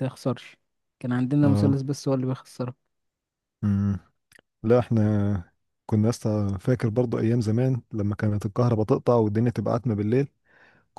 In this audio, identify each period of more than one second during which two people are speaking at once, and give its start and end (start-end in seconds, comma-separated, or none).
none